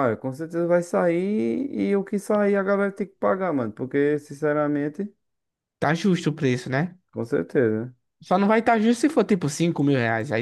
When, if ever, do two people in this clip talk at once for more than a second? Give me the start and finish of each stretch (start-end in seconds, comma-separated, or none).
none